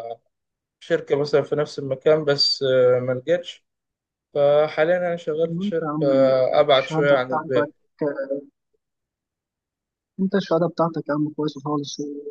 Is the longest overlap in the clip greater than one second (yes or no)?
yes